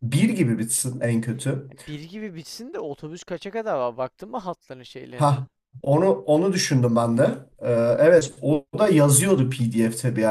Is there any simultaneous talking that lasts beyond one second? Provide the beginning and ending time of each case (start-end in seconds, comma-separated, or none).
none